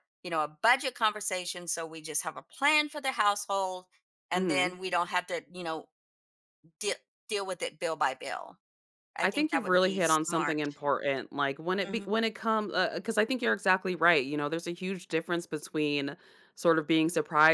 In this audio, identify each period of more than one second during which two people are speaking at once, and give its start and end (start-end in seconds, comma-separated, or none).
9.2-10.6